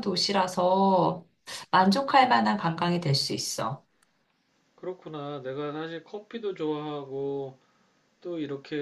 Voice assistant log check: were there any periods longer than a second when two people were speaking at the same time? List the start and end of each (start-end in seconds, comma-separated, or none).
none